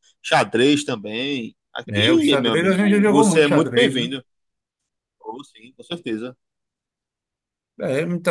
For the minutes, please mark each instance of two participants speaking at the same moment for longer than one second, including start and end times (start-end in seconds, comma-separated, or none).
1.9-4.1